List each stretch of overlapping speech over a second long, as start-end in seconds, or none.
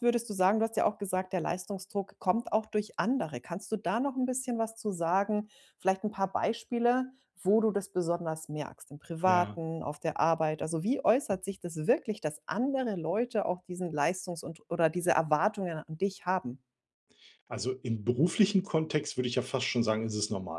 none